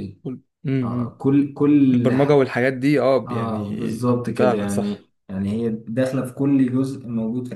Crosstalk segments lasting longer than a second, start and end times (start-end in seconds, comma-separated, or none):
3.3-5.1